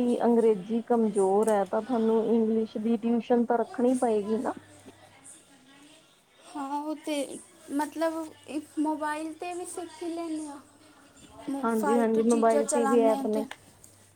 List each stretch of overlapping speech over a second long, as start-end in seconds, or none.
11.8-13.4